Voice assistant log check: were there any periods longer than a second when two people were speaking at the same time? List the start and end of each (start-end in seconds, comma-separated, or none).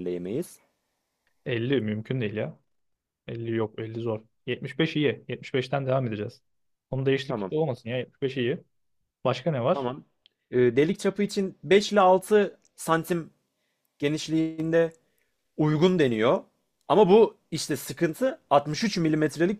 none